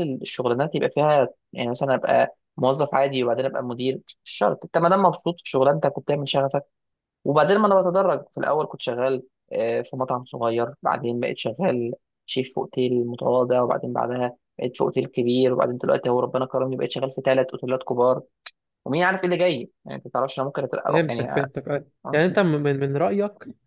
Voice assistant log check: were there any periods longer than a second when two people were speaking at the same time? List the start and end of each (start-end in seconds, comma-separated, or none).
none